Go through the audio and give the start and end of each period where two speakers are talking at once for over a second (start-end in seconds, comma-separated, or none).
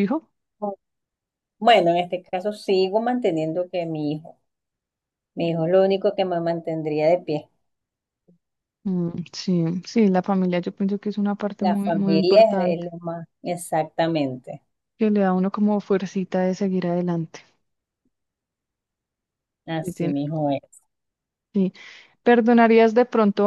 11.6-12.9